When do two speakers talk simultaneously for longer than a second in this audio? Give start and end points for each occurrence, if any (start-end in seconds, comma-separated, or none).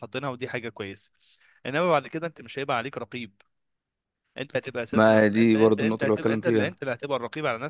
4.9-6.8